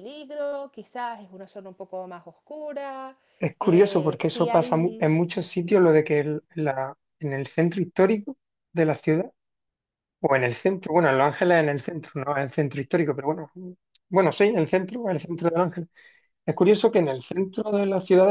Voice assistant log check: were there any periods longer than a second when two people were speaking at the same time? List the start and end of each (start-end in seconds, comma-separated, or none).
3.6-5.2